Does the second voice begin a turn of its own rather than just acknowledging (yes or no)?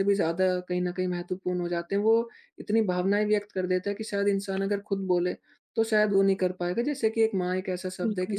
no